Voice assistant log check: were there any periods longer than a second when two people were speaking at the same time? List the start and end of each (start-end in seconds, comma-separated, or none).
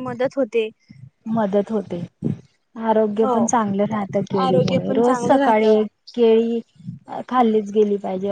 4.5-5.8